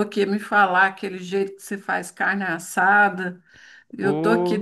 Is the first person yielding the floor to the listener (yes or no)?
no